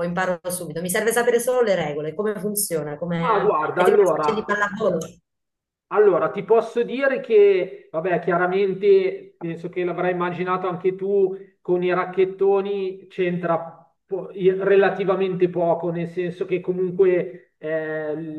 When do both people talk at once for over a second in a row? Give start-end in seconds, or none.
3.2-4.6